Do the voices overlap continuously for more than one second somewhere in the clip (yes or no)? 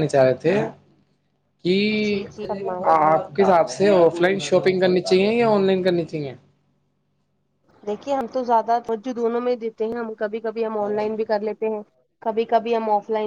no